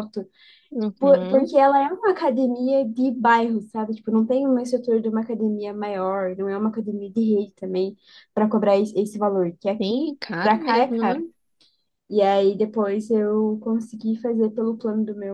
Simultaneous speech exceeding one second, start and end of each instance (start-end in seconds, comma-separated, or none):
9.8-11.2